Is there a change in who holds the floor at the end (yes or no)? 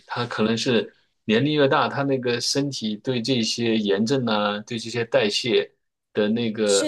no